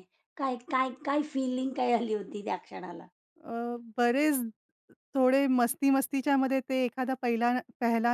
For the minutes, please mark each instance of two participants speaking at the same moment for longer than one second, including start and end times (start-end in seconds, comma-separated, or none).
none